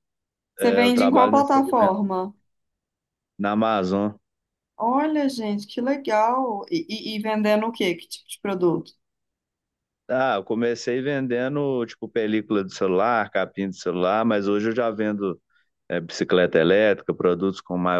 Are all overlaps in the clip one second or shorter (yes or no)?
no